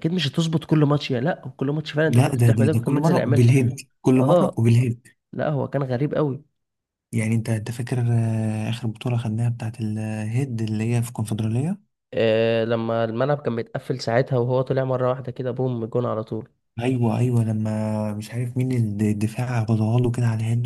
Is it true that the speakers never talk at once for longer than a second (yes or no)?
no